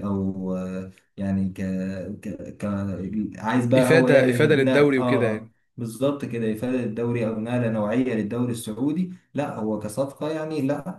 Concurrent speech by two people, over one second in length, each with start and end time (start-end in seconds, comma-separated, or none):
3.8-5.5